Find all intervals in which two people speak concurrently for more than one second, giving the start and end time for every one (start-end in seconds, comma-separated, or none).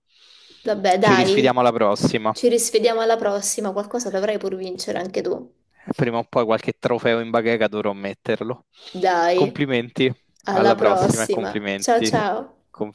10.5-12.2